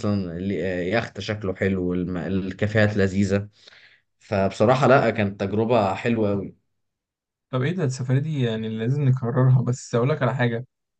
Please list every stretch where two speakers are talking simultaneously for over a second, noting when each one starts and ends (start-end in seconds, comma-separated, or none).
none